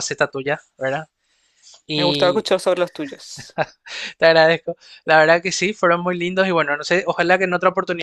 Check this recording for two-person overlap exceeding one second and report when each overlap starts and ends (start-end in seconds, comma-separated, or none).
none